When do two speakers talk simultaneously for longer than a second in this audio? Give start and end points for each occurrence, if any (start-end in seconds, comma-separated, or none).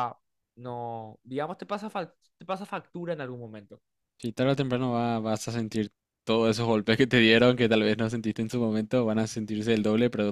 none